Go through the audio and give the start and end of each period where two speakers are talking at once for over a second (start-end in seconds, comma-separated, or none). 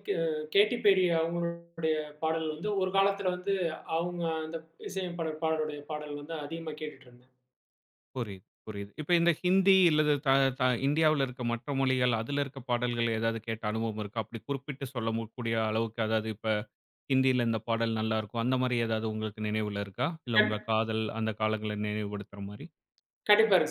none